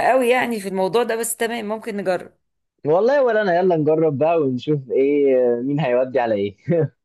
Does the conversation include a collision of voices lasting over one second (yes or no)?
no